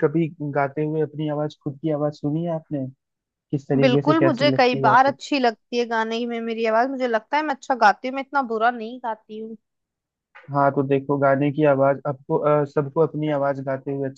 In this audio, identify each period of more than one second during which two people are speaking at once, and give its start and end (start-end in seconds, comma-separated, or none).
3.8-5.2